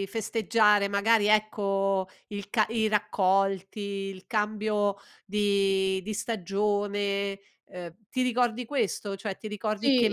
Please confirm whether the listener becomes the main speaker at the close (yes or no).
yes